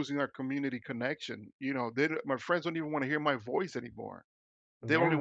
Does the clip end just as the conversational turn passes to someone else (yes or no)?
no